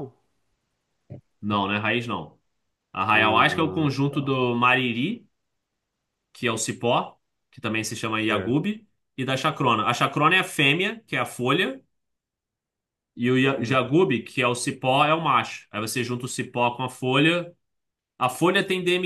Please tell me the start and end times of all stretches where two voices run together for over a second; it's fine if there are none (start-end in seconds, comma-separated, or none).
3.1-4.4